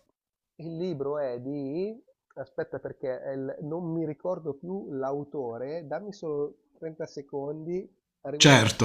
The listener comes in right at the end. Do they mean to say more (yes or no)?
yes